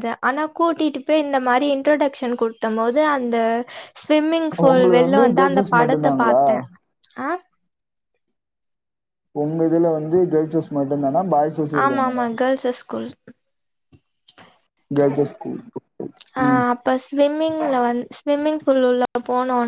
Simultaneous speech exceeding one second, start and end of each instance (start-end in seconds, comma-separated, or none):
4.4-6.4